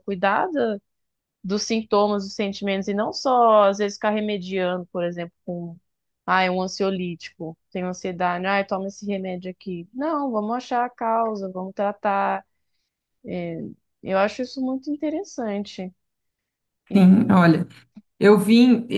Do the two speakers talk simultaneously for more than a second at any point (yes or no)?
no